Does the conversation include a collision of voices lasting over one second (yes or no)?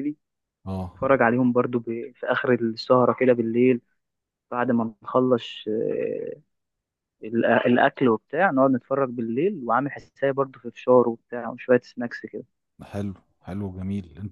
no